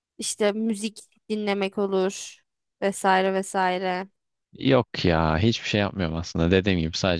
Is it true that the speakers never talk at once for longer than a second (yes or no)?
yes